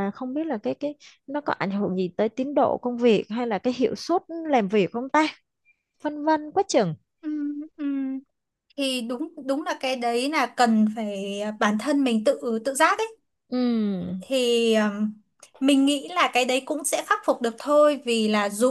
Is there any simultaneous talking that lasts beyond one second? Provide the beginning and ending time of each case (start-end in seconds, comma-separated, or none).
none